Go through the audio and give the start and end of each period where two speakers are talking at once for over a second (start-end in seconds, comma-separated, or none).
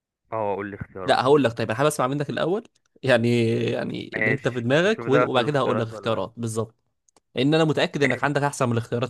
4.2-6.2